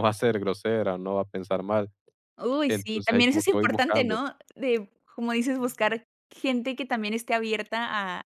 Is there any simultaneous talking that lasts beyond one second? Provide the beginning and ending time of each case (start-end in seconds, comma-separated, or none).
2.7-4.2